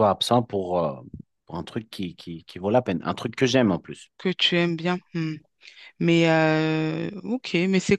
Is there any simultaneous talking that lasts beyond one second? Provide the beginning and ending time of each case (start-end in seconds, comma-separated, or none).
none